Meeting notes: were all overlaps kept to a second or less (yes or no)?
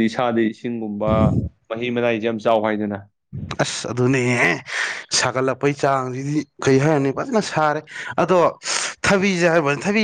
yes